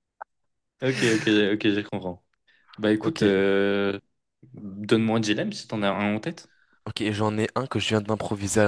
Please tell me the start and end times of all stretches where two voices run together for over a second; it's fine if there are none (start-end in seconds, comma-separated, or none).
none